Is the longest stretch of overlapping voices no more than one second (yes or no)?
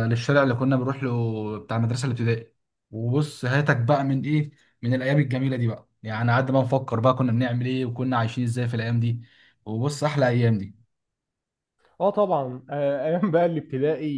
yes